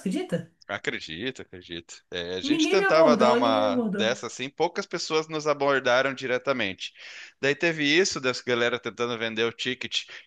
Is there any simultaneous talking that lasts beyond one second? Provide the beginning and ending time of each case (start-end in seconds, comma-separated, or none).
2.4-4.1